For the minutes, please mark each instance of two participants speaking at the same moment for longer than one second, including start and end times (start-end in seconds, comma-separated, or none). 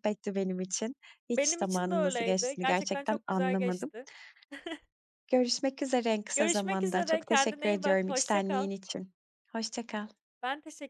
1.3-3.9, 6.3-8.7